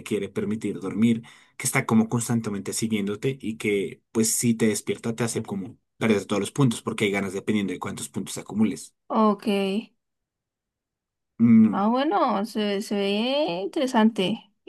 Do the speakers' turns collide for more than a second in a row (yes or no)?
no